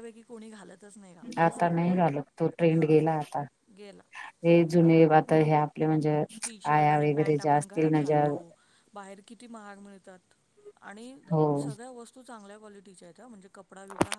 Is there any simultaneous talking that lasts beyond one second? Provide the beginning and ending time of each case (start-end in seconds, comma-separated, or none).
6.8-8.3